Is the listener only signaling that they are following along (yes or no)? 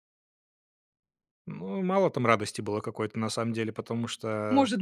no